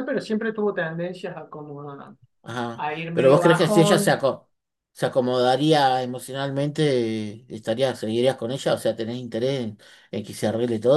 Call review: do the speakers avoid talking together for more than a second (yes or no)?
no